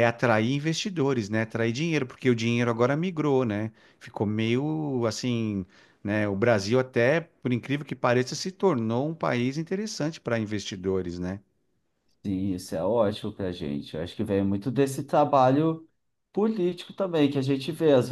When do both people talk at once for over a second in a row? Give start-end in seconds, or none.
none